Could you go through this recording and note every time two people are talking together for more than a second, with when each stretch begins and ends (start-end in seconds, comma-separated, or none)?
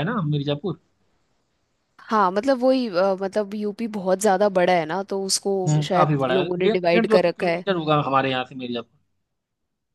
5.7-7.6